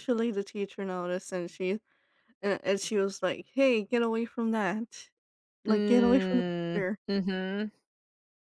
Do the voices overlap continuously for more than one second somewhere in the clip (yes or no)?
yes